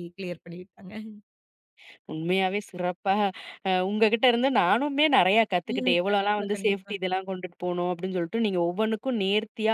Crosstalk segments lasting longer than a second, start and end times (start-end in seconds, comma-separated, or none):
5.7-6.9